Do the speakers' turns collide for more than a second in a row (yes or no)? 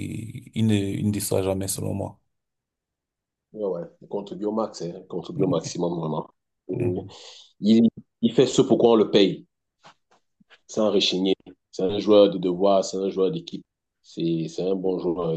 no